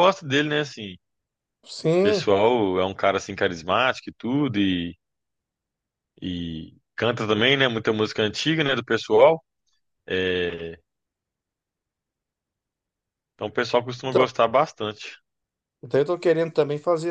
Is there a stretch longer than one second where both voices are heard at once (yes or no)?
no